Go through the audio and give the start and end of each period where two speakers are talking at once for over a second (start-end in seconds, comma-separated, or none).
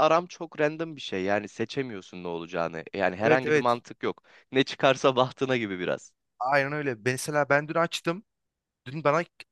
none